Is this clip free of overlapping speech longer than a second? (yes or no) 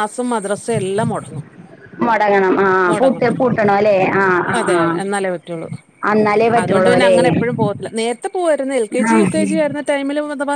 yes